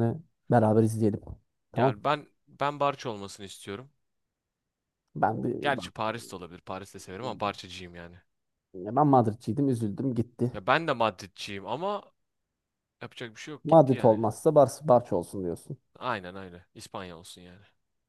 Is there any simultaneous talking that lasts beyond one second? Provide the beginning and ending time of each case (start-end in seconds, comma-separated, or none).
none